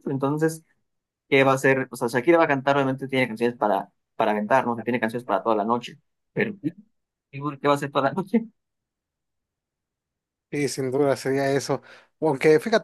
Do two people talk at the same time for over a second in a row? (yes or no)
no